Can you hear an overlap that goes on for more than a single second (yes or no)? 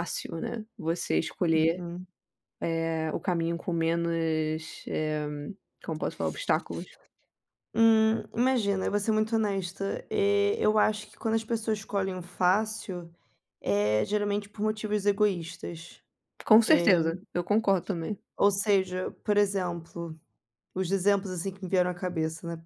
no